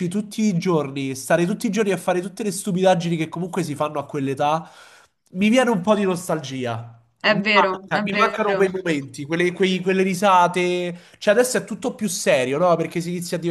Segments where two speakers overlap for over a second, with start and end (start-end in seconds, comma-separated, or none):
7.3-8.7